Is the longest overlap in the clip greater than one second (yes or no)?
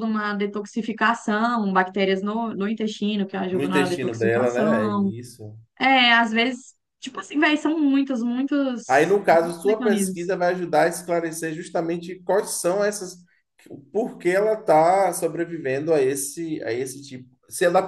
yes